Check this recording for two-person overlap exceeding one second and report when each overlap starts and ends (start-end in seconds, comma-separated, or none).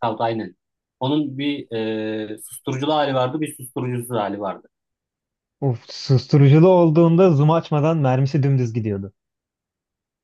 none